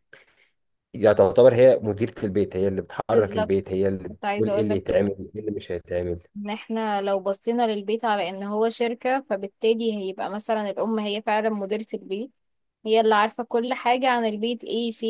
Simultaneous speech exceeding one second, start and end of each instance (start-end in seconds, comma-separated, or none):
3.1-5.1